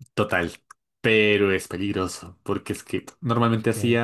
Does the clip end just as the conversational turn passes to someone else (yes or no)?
no